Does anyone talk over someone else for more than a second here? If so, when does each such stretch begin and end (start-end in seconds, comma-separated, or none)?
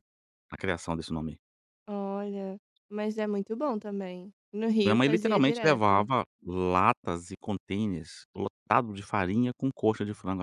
4.8-6.1